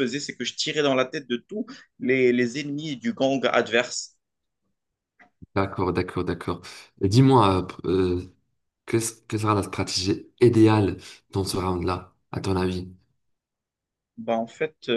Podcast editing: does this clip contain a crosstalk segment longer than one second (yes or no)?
no